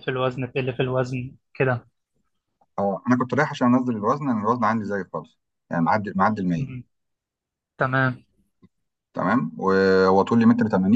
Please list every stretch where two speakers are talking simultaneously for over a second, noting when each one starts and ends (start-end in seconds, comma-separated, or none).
none